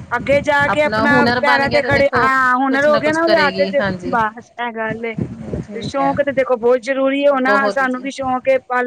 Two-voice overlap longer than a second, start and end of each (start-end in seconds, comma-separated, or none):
0.7-4.1